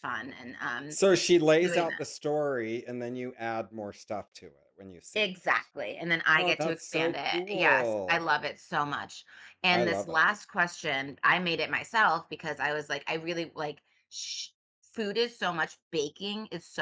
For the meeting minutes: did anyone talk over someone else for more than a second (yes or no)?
yes